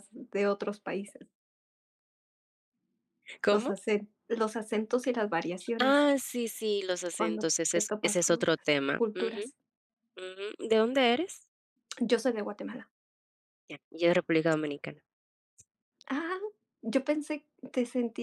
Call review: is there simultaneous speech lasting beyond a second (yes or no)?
yes